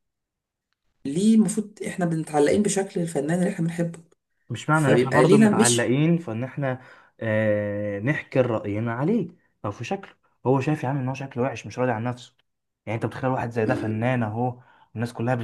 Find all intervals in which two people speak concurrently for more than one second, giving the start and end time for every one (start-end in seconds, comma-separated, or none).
4.7-6.0